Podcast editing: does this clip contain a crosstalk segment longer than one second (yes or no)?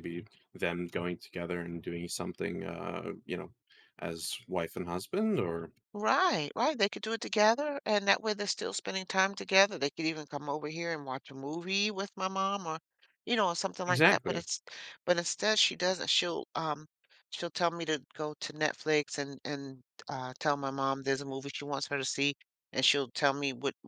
no